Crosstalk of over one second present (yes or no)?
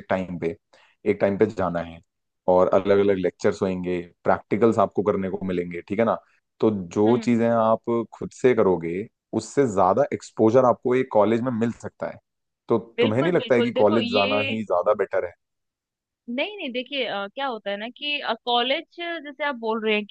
yes